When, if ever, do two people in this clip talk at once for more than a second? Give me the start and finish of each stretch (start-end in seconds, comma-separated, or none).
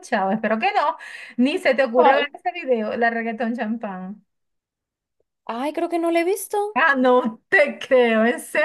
none